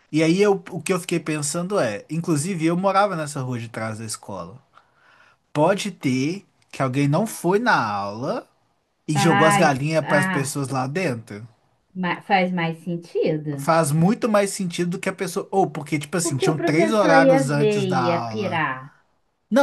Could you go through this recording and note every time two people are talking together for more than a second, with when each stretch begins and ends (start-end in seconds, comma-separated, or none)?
9.1-10.6, 16.2-18.7